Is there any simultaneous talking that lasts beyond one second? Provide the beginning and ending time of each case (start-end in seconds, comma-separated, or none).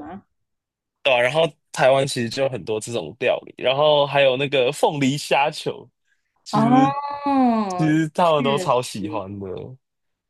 7.8-9.4